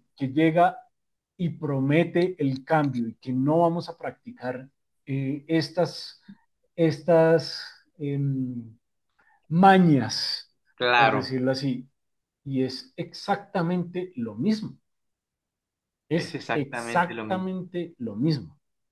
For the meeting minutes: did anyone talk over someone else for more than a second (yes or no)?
yes